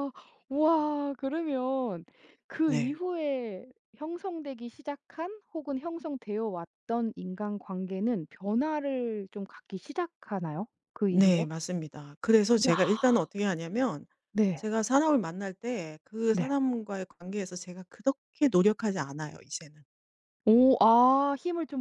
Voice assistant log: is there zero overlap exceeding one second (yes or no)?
yes